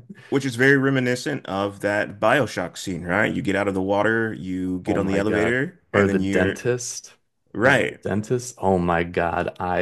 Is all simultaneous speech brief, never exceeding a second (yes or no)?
no